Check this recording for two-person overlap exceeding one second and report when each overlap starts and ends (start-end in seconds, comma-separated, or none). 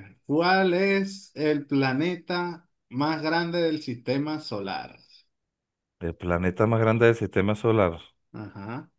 none